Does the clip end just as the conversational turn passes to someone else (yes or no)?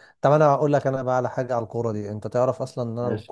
no